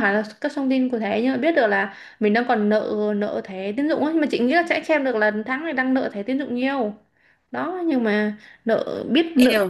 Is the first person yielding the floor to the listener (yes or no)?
yes